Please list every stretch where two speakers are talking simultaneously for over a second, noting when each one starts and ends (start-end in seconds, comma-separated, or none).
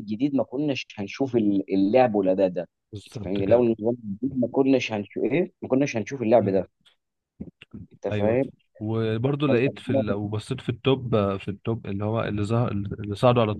none